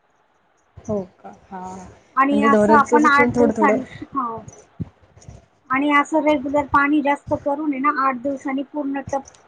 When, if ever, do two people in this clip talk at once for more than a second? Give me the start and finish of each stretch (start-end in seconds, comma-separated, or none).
2.3-3.8